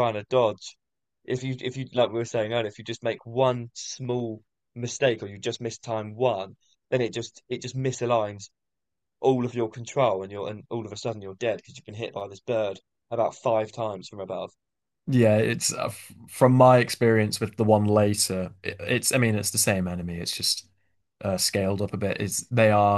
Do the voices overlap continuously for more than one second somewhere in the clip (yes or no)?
no